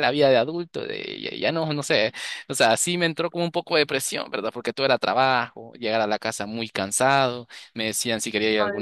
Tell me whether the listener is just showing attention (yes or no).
yes